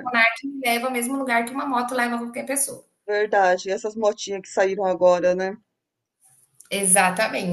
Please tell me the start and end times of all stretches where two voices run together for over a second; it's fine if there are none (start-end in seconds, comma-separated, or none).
none